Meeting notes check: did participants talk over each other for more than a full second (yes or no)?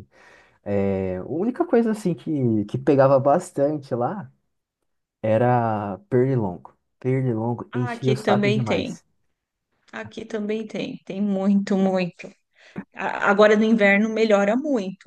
yes